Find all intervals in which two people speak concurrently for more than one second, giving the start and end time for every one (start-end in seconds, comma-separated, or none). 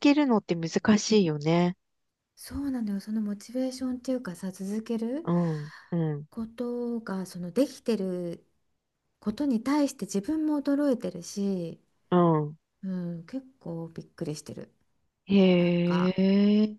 none